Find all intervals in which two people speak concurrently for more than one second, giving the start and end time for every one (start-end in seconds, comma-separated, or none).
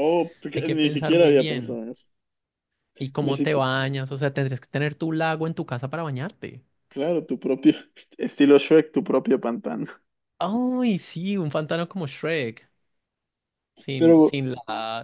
0.6-1.8